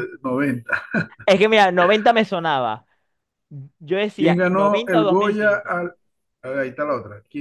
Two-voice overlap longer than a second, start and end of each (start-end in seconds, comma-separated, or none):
4.2-5.8